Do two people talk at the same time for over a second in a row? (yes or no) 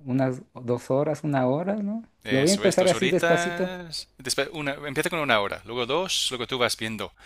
yes